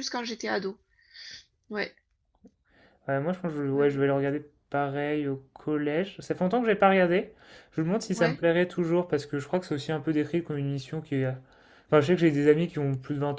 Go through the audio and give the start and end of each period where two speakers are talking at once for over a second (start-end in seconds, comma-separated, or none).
none